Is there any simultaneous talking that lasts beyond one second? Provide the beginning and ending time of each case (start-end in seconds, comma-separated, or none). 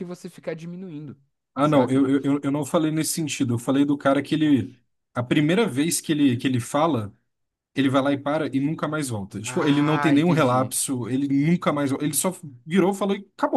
9.4-10.7